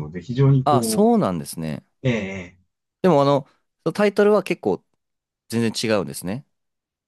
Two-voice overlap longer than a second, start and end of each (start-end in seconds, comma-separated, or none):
none